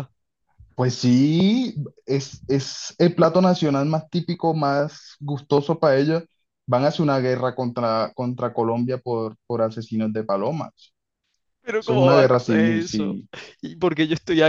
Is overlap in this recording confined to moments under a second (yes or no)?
no